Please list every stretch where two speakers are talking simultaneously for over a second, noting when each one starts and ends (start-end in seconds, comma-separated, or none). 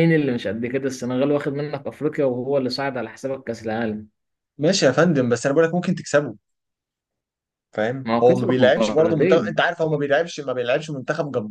8.1-9.6